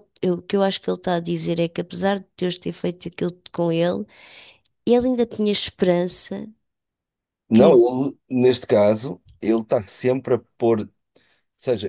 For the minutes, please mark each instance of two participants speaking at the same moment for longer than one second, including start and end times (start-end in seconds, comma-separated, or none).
none